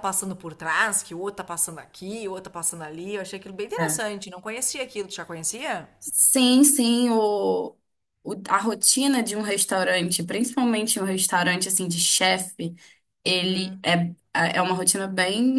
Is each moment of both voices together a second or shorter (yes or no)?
yes